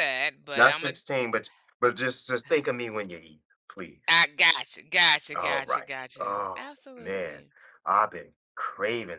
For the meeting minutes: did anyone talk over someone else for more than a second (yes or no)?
yes